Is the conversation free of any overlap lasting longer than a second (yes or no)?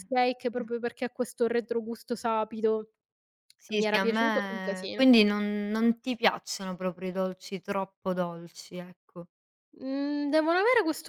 no